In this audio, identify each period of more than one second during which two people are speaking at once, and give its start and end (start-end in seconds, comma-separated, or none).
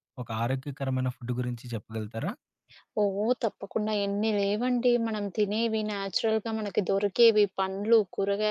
none